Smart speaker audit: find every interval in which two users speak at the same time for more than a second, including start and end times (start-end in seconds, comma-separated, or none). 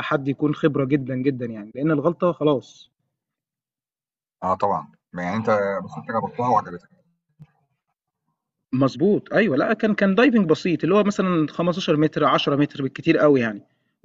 none